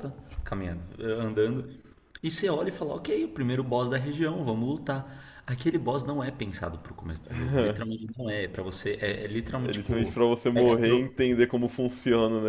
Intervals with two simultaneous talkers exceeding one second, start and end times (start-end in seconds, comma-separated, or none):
9.6-11.1